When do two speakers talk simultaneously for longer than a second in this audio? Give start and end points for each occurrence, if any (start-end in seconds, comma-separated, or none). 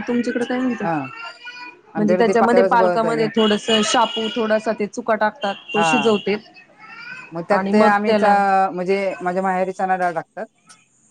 2.0-3.3